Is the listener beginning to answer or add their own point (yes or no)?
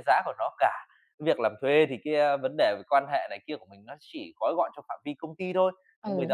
no